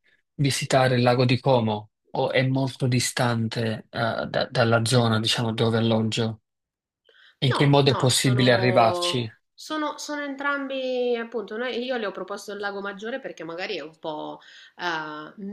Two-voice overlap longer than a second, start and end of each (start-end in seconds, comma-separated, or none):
7.5-9.3